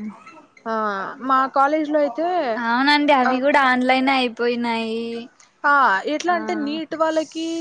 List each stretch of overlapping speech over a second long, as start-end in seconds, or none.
none